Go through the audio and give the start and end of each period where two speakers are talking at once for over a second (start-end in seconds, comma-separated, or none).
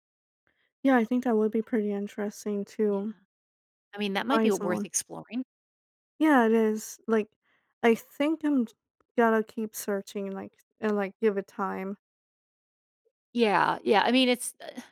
none